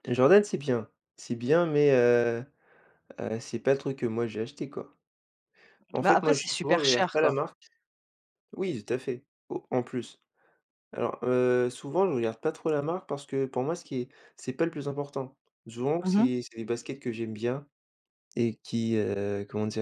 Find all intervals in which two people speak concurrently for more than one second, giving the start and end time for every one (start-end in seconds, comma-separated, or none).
6.0-7.4